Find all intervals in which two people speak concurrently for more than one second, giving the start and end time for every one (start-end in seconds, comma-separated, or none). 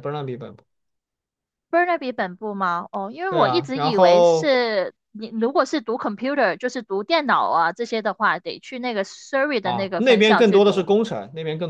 3.3-4.5, 9.6-10.9